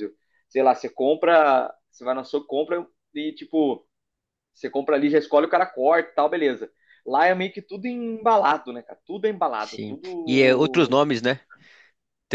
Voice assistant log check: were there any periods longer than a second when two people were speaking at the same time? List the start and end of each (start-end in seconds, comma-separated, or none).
9.6-11.0